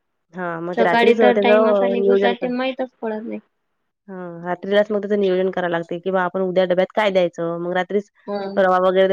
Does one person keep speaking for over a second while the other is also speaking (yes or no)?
yes